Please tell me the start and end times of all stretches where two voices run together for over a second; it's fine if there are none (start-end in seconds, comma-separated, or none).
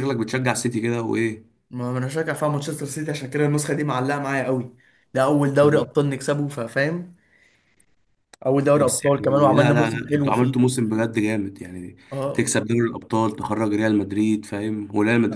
8.8-10.6